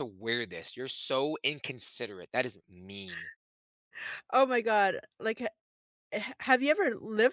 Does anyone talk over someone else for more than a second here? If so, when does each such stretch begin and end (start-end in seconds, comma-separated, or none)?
none